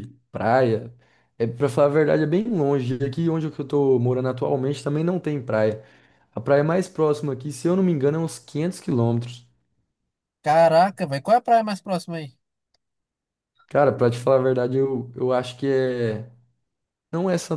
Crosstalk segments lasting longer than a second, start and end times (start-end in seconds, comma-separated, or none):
none